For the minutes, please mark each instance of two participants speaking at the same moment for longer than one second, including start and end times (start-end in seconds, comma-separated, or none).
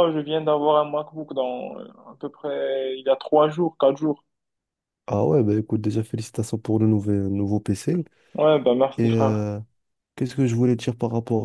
none